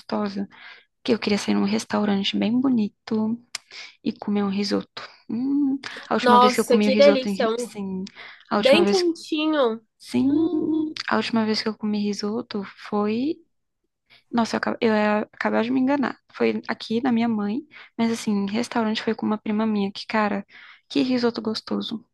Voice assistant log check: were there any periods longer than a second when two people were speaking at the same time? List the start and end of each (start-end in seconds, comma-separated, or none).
6.2-7.7